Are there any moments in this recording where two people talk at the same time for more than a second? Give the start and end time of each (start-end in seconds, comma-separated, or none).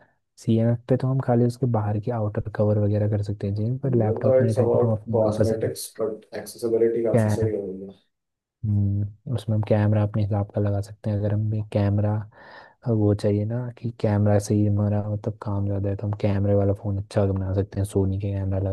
3.9-5.7